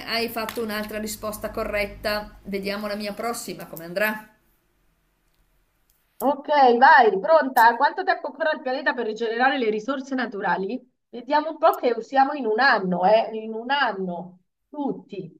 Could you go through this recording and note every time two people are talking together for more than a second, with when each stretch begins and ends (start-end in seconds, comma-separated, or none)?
none